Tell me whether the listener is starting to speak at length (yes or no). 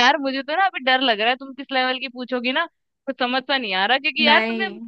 no